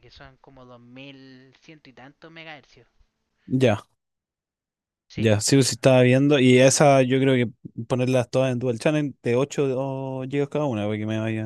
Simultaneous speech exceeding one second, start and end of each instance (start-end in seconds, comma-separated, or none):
none